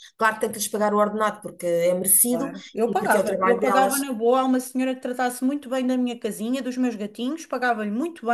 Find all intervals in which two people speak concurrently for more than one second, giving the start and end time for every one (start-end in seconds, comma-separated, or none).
2.3-4.0